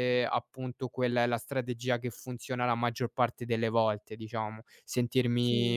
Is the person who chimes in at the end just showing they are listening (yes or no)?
yes